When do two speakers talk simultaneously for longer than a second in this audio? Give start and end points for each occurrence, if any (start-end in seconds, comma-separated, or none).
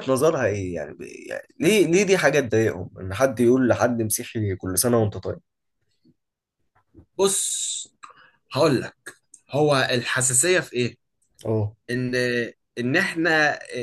none